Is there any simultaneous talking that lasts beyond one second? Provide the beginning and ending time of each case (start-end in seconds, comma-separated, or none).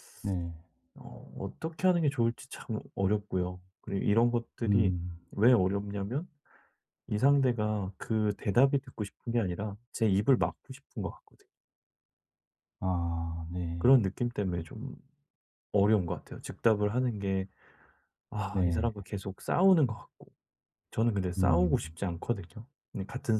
none